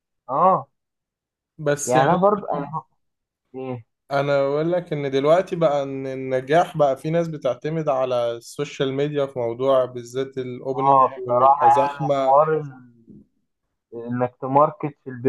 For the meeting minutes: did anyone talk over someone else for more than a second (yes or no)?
yes